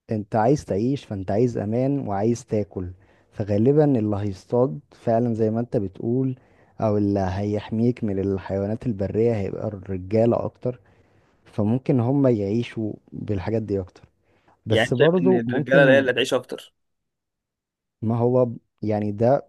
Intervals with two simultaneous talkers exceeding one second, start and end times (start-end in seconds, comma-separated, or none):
14.7-16.1